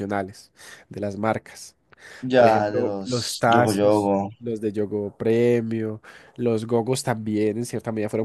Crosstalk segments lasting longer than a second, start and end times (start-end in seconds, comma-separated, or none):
2.4-4.3